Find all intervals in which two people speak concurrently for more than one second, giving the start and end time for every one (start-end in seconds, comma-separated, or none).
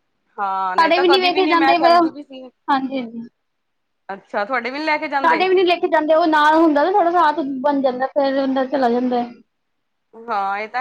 0.8-2.5